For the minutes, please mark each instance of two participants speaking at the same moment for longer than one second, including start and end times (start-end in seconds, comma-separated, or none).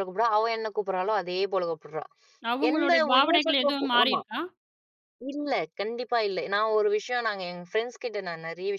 2.7-4.2